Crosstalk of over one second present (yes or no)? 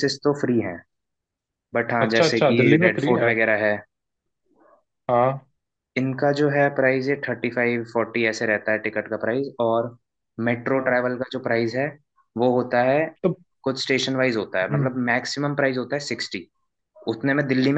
yes